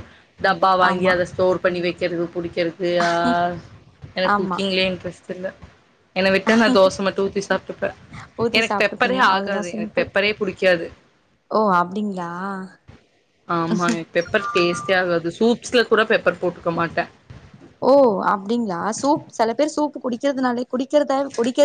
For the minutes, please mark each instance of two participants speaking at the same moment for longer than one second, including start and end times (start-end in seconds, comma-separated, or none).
8.6-10.1